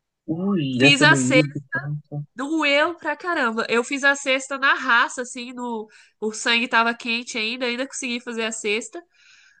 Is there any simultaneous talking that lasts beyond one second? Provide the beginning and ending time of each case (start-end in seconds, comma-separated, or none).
none